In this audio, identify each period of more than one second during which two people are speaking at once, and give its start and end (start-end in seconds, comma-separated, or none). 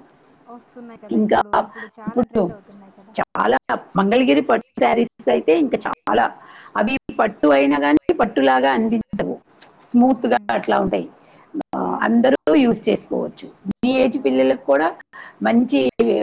none